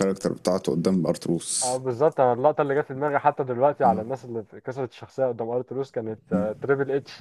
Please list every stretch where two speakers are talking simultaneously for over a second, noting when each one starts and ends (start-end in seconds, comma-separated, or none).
none